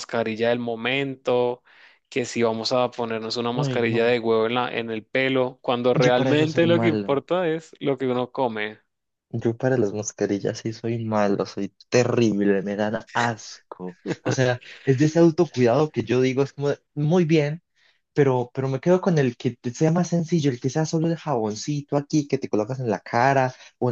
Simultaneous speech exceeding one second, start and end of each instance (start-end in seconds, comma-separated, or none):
5.9-7.2